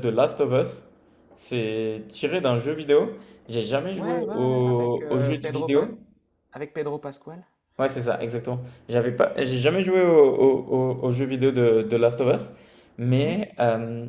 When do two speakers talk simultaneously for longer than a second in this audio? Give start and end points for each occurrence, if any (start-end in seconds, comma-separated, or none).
4.0-5.9